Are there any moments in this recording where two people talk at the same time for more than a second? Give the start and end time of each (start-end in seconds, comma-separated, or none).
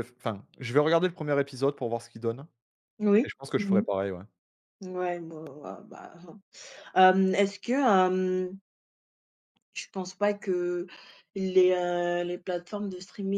none